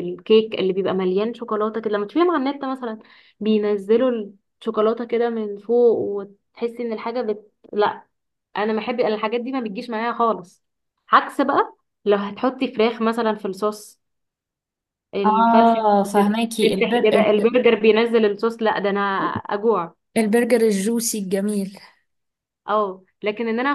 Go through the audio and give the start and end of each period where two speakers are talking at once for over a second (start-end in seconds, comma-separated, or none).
15.2-17.2